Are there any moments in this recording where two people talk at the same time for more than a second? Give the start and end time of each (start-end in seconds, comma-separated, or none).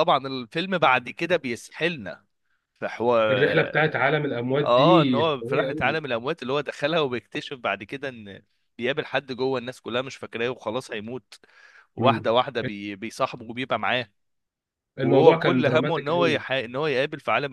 4.6-6.0, 15.0-16.4